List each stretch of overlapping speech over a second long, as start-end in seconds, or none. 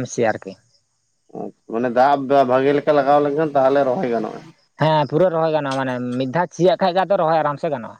none